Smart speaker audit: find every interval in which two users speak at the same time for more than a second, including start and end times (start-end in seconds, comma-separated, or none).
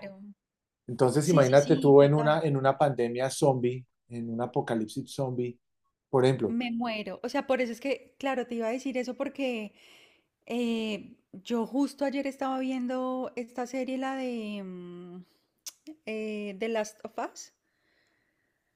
1.2-2.4